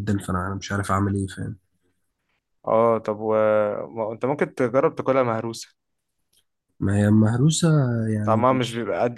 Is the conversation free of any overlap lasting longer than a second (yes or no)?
yes